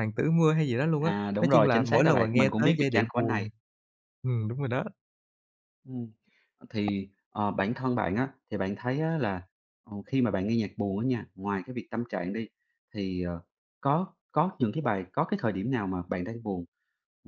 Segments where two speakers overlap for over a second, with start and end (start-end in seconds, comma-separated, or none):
1.0-3.5